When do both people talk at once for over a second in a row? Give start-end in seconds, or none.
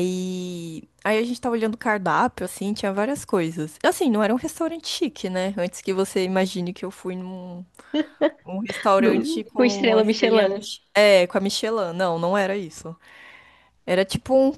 9.0-10.7